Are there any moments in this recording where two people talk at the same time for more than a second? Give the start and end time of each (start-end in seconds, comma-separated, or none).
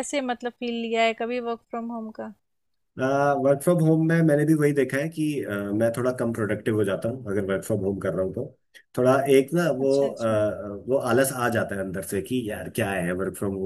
none